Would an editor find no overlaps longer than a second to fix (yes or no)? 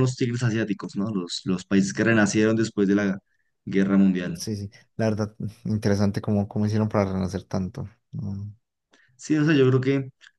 yes